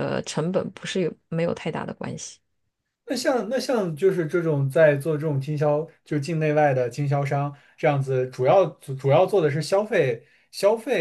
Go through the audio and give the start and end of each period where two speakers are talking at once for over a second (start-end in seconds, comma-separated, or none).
none